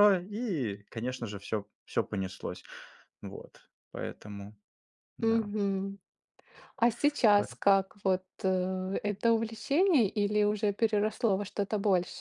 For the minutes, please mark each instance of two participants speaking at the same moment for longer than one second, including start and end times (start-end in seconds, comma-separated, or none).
none